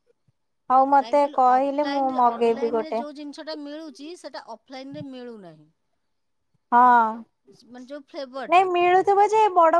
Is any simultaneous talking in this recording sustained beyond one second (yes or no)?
yes